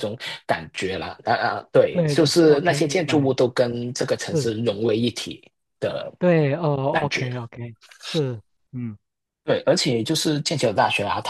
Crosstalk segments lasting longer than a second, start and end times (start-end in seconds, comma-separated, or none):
1.9-3.3